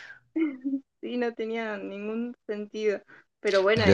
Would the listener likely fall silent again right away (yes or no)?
no